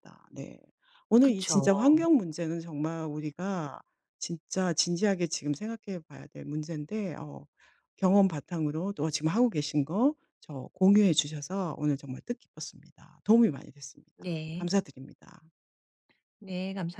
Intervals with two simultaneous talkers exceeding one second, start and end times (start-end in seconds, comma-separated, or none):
none